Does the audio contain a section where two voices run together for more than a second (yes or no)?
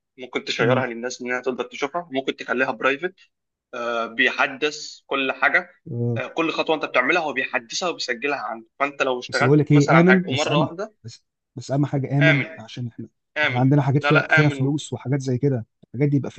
yes